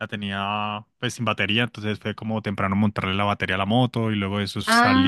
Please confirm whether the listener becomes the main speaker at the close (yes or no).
yes